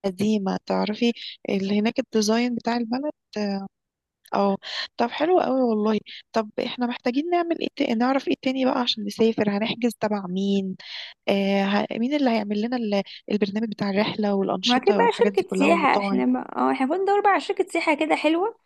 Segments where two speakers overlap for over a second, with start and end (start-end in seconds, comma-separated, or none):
14.6-16.2